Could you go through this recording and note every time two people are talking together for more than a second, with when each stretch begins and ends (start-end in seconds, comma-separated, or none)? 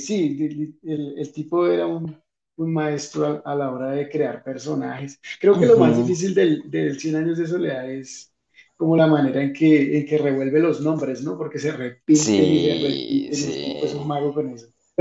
12.1-13.9